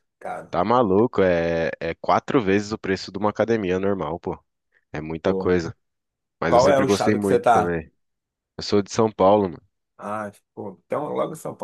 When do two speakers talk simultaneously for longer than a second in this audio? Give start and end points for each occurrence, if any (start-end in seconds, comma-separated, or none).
6.5-7.8